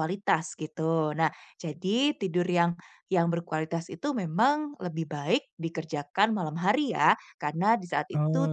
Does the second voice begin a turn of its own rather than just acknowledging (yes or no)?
no